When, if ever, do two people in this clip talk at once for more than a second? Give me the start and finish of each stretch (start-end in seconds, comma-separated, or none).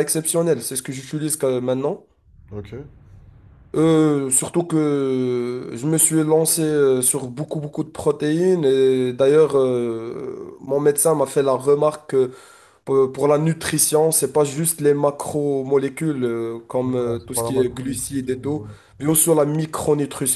16.9-18.6